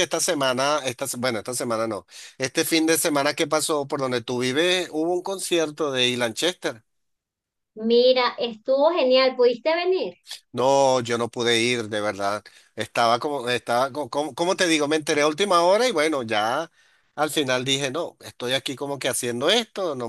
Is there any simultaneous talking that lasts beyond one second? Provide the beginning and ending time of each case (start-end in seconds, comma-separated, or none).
none